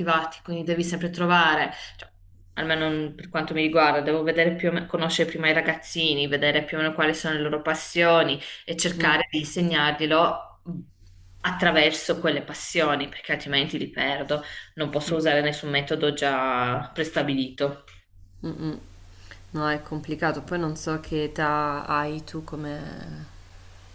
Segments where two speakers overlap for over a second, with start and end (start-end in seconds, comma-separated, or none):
none